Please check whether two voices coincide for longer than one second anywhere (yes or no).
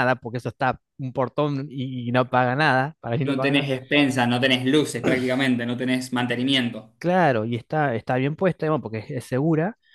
no